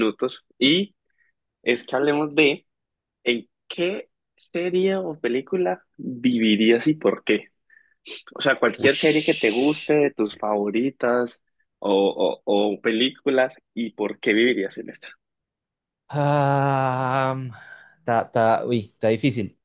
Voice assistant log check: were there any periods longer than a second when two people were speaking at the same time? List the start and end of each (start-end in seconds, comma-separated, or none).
8.8-10.0